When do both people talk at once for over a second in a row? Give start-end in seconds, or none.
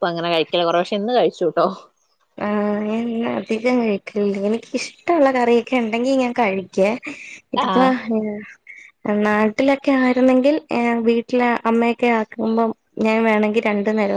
none